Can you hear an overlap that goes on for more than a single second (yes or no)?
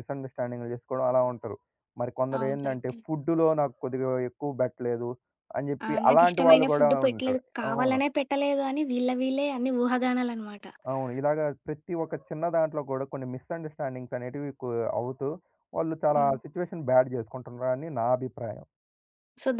yes